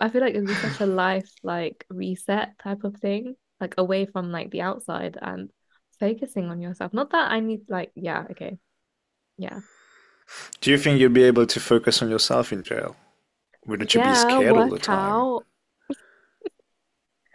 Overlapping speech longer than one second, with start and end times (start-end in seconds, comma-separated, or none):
13.9-15.3